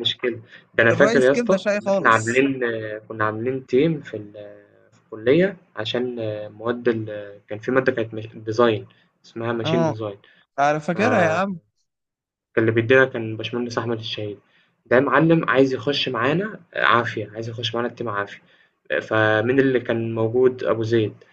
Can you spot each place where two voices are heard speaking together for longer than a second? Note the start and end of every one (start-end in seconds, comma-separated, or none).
0.9-2.5